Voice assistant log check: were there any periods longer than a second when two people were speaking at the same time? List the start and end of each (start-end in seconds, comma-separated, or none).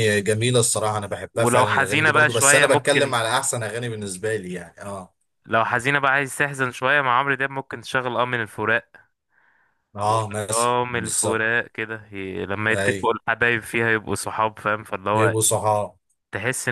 1.3-3.1, 10.0-11.4